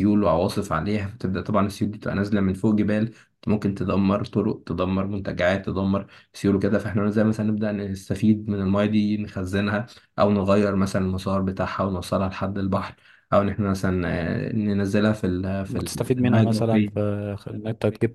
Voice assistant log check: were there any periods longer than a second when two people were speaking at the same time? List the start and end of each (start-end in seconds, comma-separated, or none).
15.7-17.1